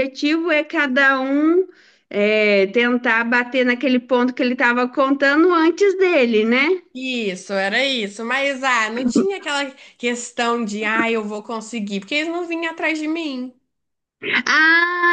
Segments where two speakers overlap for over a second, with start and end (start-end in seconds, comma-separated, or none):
none